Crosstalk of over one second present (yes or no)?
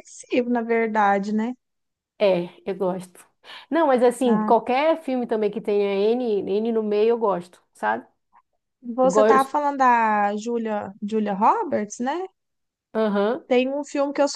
no